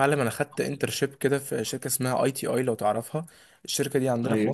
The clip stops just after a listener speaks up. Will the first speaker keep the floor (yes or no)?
yes